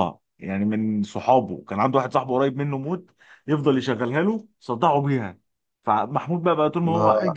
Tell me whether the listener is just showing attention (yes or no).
yes